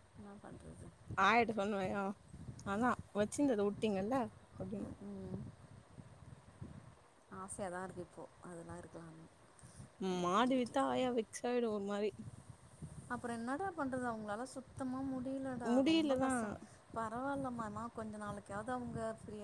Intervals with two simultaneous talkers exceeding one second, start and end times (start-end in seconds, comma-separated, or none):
none